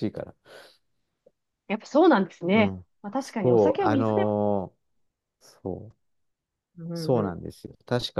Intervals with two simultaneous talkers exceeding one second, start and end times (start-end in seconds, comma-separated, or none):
2.5-4.2